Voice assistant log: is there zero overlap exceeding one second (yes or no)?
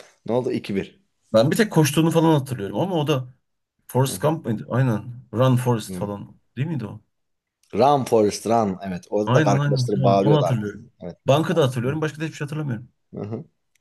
no